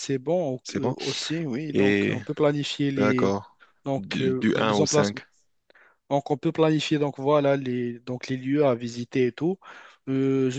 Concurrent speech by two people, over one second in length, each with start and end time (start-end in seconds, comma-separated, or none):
4.0-5.2